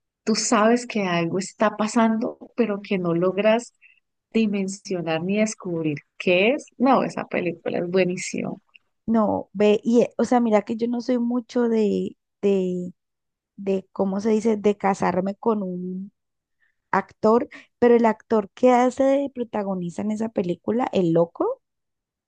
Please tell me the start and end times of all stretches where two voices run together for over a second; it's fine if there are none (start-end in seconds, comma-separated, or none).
none